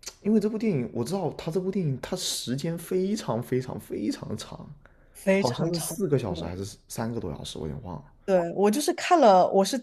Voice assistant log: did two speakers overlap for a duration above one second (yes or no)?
no